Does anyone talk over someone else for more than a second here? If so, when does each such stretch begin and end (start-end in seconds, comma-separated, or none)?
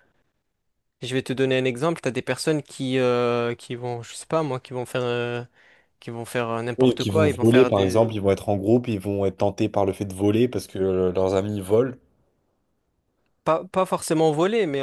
6.8-8.1